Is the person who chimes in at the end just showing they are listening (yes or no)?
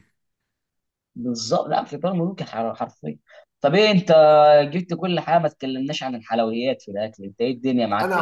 no